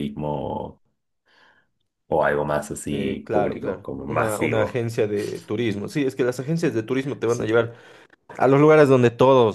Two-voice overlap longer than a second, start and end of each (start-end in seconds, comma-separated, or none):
2.9-4.8